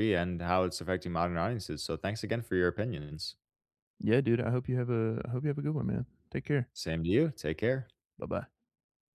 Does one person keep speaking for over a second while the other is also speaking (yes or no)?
no